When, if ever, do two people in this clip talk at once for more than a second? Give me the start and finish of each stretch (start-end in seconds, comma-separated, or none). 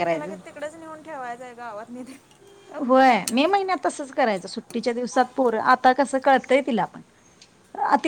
none